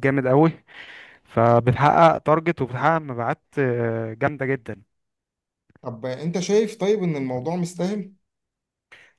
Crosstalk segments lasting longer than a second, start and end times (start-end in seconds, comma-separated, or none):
none